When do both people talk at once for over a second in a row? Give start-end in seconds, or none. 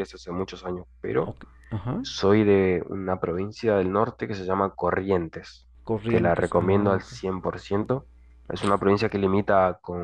5.8-7.1